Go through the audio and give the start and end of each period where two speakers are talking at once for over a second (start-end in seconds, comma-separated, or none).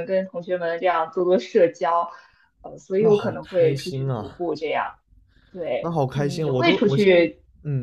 3.0-4.4, 5.8-7.2